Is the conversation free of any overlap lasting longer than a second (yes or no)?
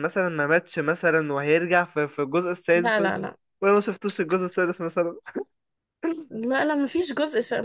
yes